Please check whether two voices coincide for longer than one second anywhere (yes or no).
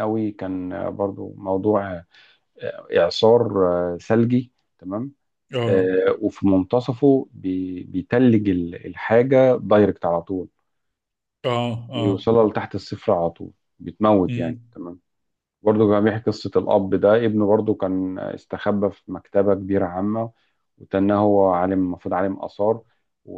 no